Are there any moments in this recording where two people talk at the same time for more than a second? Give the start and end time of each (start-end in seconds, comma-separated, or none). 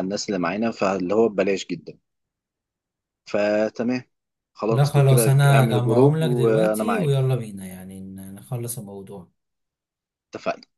4.7-7.2